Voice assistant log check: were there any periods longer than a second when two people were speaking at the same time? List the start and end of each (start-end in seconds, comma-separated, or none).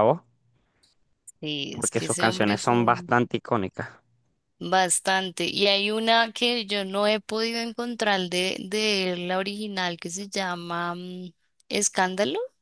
1.7-3.1